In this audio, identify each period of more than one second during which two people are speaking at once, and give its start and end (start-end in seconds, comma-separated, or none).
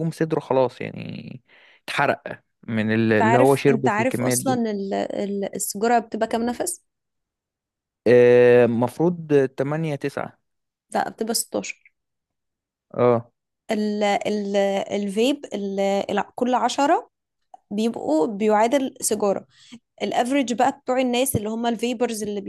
3.1-4.6